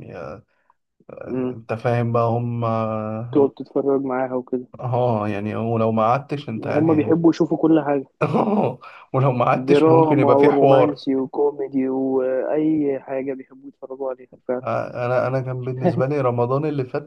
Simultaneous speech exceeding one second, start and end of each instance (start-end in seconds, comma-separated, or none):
9.7-11.0